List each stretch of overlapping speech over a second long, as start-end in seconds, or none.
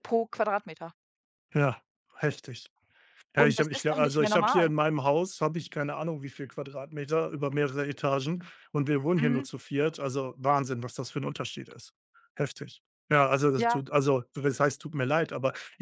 3.4-4.7